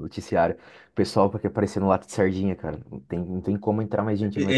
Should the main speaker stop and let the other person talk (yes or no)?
yes